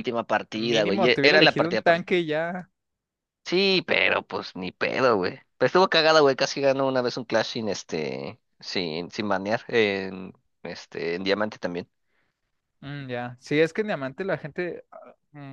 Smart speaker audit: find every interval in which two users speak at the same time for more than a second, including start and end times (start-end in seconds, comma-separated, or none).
0.6-2.0